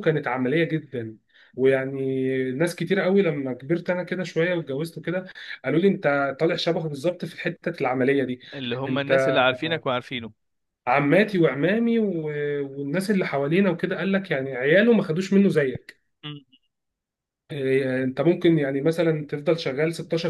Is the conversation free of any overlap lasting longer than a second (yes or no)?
yes